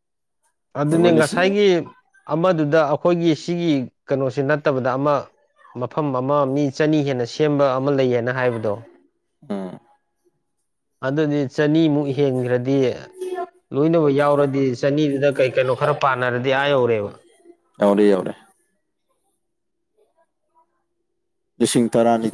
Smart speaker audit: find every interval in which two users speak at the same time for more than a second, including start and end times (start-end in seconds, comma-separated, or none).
none